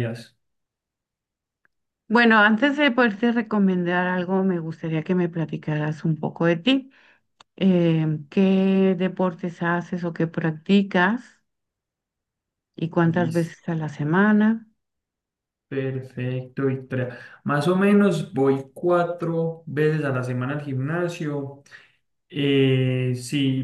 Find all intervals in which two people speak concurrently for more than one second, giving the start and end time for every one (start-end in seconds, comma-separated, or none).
none